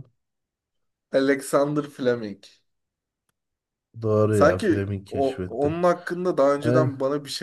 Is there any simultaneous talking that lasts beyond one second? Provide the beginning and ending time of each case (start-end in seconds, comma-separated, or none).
4.3-5.7